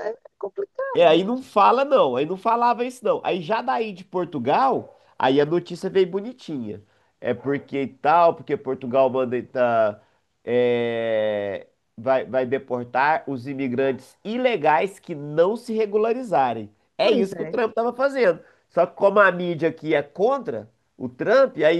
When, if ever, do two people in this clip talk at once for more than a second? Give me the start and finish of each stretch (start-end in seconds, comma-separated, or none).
none